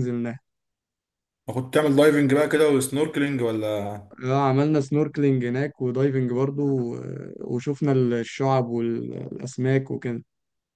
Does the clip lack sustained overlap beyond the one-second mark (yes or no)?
yes